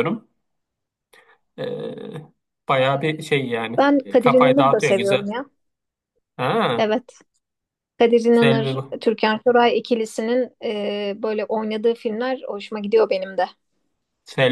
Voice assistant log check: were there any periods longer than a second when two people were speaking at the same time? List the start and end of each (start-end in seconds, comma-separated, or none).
3.8-5.3